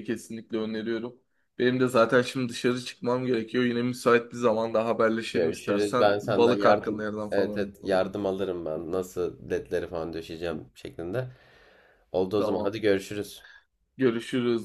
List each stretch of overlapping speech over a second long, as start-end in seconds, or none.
5.3-8.2